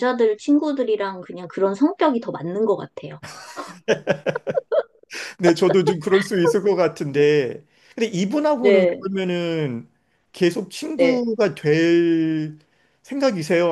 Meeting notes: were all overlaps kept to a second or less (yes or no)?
yes